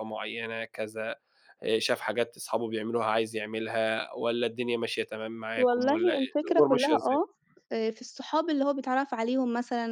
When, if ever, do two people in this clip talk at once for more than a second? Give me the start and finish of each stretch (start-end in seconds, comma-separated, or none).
5.6-7.2